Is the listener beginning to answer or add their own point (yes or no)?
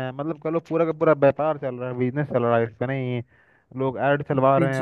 no